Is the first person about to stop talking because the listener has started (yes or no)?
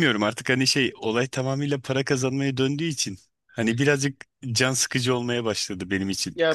yes